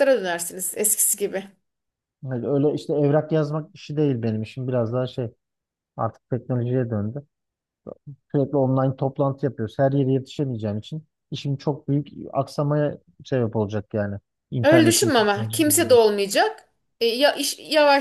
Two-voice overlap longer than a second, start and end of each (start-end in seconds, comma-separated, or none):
14.6-16.1